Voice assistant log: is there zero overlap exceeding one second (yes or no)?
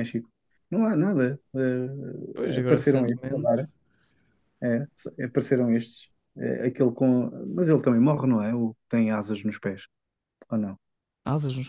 no